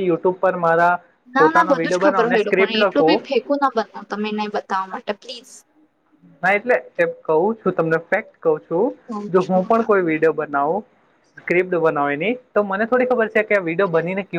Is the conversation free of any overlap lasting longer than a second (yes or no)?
no